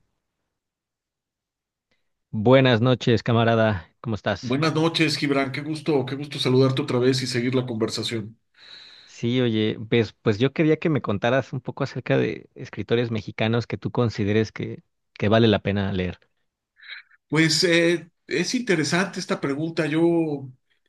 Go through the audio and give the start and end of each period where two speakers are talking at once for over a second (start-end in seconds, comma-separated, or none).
none